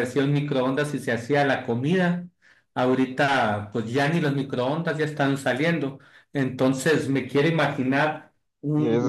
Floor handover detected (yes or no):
no